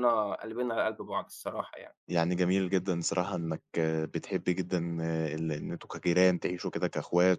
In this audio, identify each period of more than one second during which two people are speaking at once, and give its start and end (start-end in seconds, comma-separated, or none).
none